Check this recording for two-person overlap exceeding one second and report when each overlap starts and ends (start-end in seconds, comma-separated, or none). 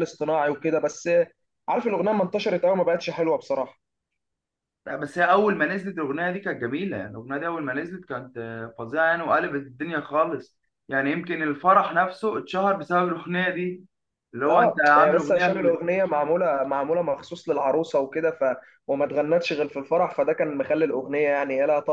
14.5-15.8